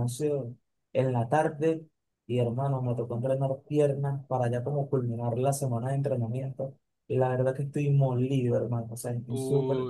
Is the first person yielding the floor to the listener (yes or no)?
yes